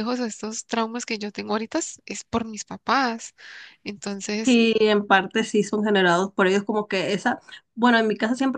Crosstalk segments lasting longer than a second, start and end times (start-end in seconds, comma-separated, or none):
none